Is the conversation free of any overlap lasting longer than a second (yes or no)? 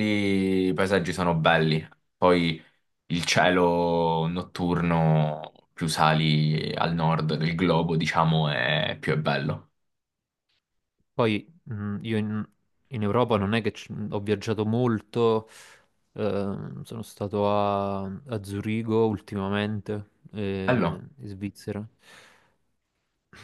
yes